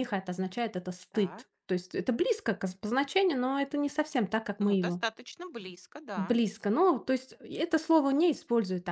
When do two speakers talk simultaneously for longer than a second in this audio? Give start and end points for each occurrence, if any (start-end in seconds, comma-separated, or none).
none